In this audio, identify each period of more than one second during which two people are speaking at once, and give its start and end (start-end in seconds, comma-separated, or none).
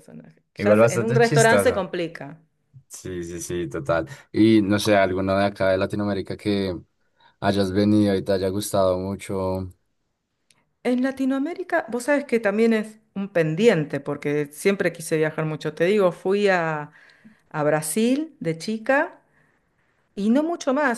0.6-1.9